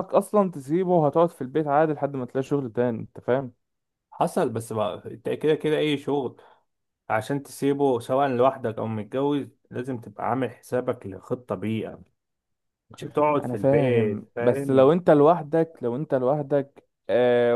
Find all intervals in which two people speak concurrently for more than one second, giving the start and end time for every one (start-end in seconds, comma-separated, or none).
13.4-14.9